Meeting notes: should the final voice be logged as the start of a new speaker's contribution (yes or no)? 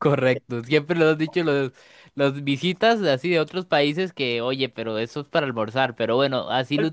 yes